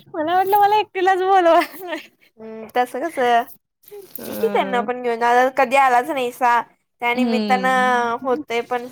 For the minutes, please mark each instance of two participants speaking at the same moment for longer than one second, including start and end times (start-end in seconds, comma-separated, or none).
7.2-8.4